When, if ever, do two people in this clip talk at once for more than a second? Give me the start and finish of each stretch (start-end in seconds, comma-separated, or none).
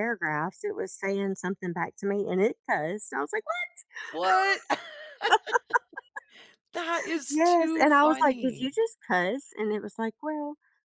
7.3-8.7